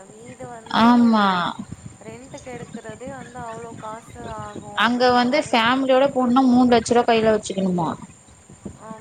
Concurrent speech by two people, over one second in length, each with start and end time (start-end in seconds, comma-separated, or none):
none